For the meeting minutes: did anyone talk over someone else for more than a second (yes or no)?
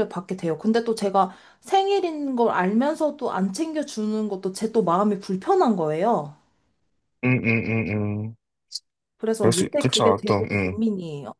yes